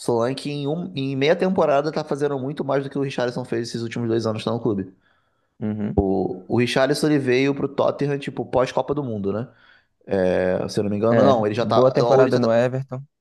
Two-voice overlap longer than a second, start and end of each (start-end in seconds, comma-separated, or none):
11.1-12.5